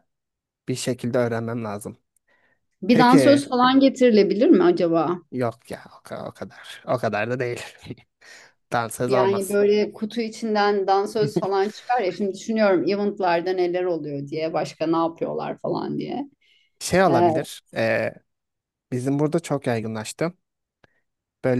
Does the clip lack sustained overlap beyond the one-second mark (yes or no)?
yes